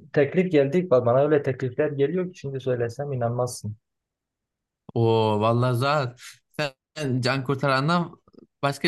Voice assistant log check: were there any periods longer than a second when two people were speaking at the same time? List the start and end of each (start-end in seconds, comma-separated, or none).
none